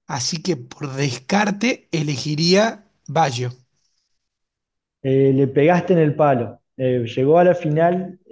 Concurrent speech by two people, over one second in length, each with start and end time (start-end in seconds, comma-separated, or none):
none